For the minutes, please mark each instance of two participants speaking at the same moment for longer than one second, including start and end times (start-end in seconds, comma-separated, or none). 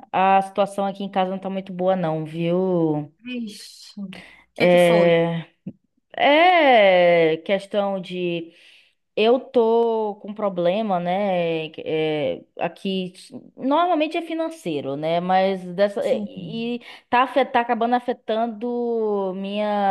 none